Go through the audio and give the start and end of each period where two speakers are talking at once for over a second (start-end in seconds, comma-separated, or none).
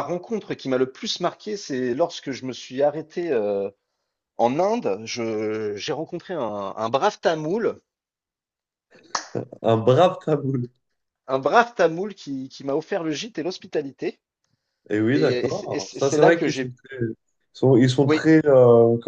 15.1-16.7